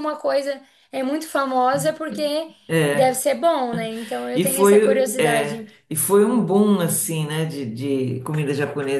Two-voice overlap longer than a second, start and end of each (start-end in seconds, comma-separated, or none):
4.3-5.7